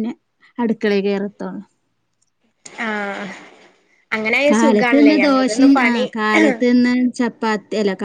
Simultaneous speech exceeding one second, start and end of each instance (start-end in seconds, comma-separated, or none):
4.5-6.0